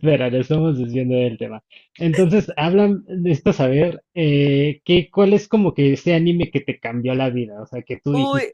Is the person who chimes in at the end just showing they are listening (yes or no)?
yes